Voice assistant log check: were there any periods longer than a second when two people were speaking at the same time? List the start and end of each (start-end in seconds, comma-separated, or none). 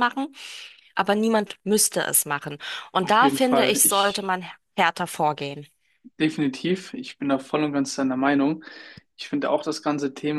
3.0-4.3